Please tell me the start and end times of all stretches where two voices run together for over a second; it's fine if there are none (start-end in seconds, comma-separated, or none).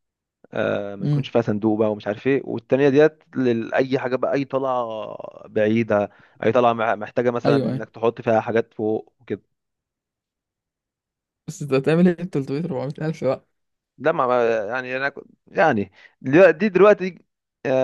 none